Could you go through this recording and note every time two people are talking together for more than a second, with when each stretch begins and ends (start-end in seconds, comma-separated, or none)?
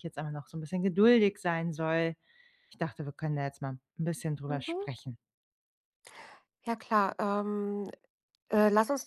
none